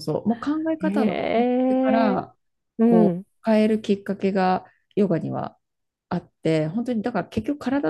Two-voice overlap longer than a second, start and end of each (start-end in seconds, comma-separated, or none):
0.8-2.2